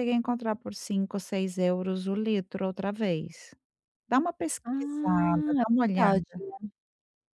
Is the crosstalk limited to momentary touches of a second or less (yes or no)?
no